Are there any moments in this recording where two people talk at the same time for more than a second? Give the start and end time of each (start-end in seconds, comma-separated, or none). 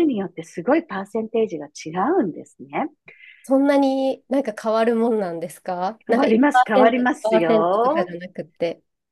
6.1-8.1